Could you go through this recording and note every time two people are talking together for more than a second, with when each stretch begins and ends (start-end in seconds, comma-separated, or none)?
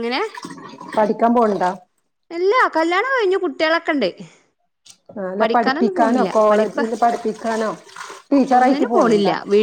none